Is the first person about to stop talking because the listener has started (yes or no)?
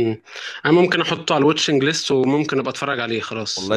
yes